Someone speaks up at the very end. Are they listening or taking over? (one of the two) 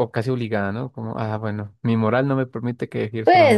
taking over